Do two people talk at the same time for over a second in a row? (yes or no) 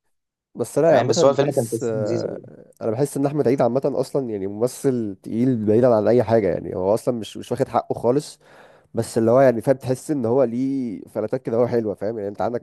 yes